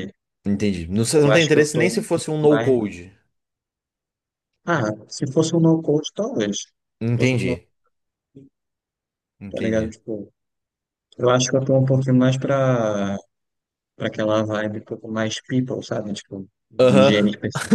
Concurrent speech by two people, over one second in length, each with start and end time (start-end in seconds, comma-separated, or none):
1.0-2.8